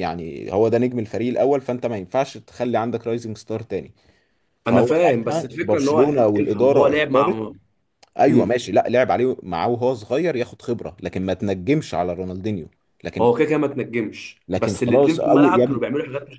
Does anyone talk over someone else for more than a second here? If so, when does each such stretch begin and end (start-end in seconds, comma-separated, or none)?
4.7-7.5, 14.5-15.8